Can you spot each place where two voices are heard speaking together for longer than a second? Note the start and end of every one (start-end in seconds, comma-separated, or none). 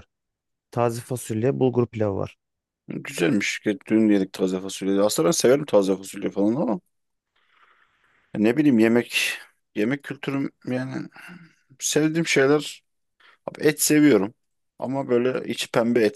none